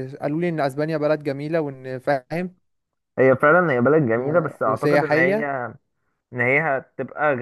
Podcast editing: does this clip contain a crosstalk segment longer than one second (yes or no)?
yes